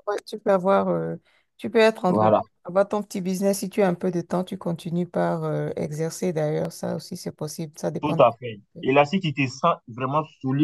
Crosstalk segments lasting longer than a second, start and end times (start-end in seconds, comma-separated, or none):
none